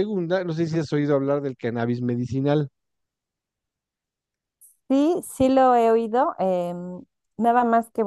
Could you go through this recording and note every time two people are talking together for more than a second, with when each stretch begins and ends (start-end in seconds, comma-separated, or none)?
none